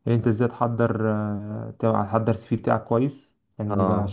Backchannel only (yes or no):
yes